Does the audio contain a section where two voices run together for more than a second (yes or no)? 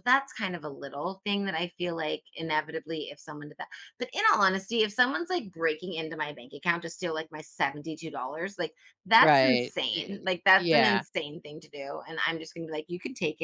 yes